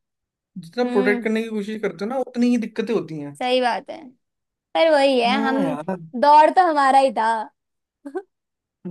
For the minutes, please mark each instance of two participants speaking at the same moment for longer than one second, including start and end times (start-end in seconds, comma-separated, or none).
none